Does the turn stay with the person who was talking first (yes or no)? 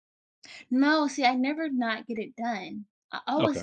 yes